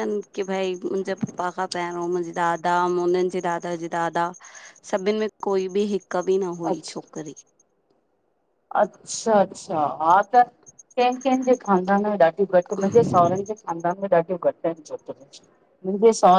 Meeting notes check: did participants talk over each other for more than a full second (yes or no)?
no